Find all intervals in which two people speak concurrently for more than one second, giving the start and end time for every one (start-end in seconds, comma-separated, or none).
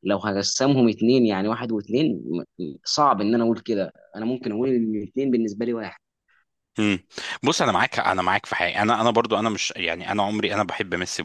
none